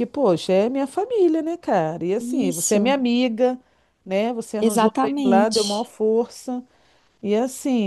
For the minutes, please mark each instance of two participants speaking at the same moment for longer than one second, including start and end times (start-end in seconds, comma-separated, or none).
4.6-5.9